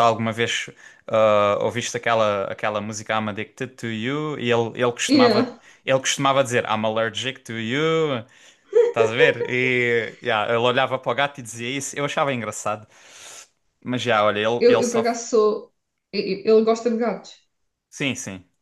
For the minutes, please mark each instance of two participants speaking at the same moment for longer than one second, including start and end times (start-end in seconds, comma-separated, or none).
none